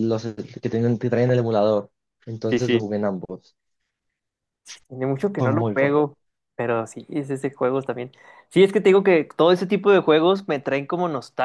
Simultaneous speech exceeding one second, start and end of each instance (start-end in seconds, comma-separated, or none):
none